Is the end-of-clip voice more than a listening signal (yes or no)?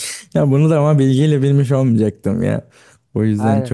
no